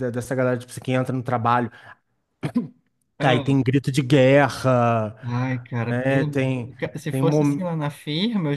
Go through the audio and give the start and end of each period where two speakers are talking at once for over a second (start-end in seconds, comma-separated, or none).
5.9-7.6